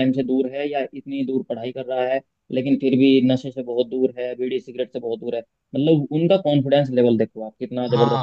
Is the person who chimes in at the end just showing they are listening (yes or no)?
no